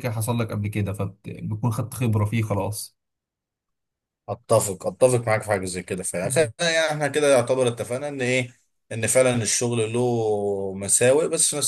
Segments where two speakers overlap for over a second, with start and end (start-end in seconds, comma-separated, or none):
none